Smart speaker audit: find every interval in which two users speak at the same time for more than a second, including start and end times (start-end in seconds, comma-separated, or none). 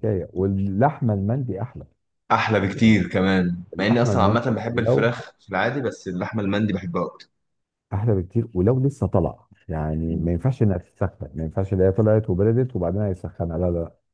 3.7-5.1